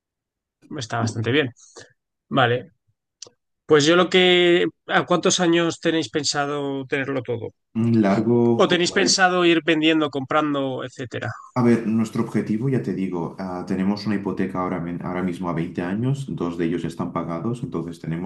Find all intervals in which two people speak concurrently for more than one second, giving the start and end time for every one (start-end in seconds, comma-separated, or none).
none